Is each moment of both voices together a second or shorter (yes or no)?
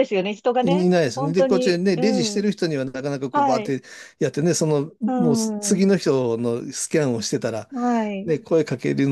no